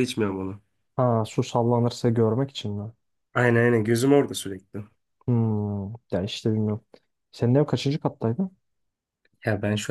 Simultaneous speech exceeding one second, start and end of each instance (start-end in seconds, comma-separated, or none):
none